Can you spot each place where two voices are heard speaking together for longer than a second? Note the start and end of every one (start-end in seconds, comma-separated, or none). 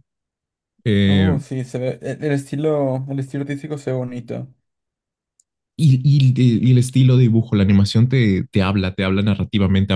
none